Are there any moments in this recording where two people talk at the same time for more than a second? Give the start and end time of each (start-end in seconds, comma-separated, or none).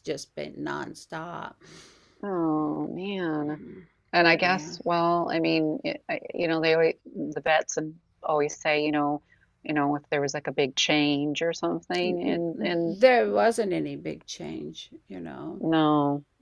none